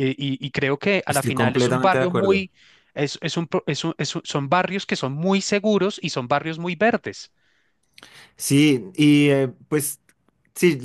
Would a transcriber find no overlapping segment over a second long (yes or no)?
no